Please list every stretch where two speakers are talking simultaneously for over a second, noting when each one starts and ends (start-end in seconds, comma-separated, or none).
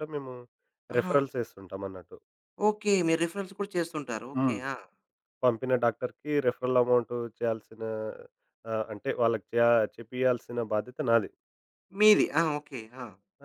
none